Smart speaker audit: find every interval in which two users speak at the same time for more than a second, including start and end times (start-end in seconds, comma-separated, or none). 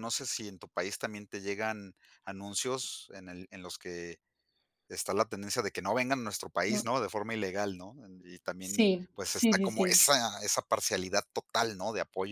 8.6-10.0